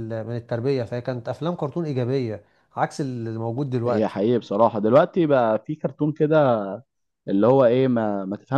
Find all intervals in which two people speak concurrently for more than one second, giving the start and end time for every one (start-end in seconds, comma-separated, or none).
none